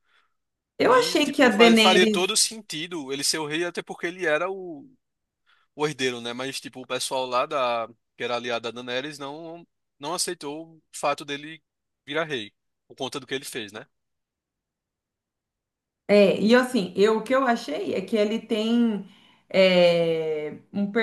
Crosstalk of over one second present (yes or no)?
yes